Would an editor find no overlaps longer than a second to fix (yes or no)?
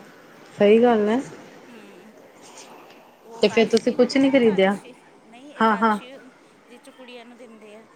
no